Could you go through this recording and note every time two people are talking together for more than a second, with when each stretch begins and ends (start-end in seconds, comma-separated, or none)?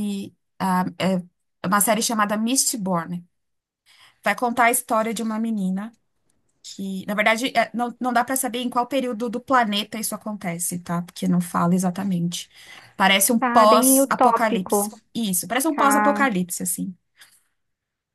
13.4-15.0